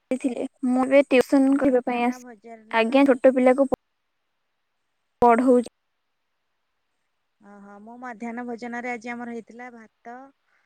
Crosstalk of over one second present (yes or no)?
yes